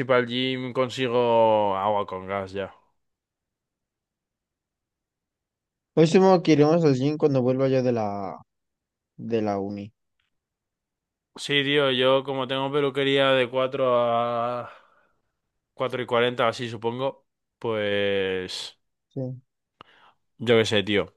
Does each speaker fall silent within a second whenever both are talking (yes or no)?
yes